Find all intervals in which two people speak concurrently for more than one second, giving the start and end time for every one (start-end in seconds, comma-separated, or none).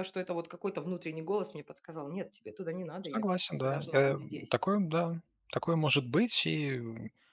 3.0-4.6